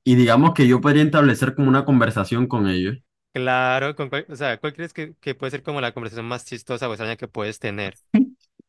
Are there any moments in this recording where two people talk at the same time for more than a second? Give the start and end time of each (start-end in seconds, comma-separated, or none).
none